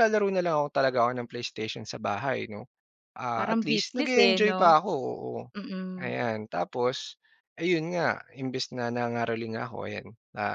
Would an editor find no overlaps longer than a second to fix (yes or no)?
no